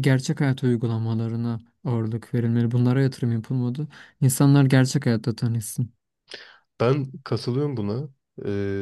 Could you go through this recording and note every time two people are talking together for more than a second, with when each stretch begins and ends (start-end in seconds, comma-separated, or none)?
none